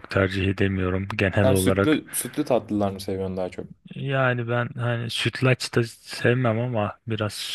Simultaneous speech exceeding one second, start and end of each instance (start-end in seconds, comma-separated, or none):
none